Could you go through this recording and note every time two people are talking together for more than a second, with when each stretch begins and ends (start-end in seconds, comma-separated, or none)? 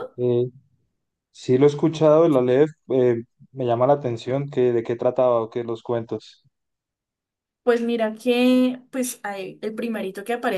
none